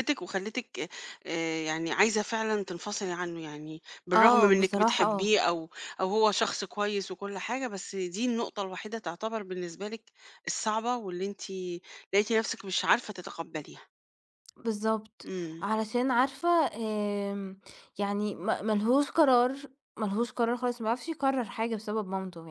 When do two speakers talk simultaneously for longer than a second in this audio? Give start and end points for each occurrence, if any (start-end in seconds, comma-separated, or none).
4.1-5.4